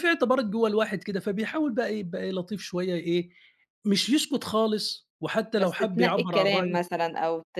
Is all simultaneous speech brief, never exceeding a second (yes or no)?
no